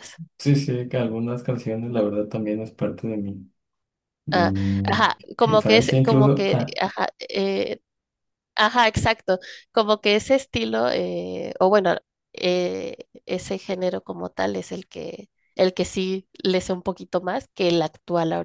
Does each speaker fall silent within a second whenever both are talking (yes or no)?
no